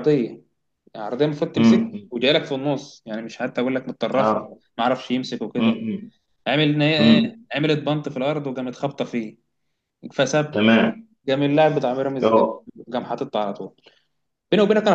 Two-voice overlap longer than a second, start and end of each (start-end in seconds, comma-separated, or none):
none